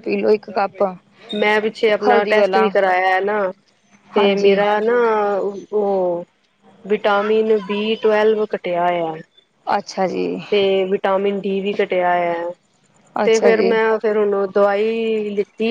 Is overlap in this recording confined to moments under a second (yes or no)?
yes